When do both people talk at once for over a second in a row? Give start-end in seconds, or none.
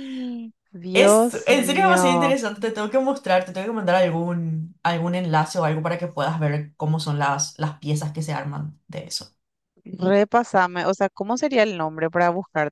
0.9-2.3